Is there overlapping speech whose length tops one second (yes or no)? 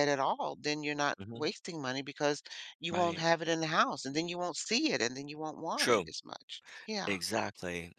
no